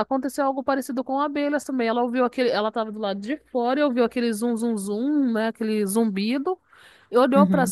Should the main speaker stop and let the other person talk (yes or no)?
no